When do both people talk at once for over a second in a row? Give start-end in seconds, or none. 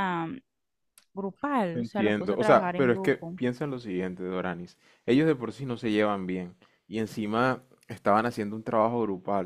1.7-3.4